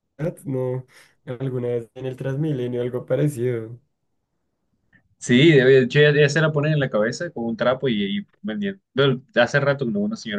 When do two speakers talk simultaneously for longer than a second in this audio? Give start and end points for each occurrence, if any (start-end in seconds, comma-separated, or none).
none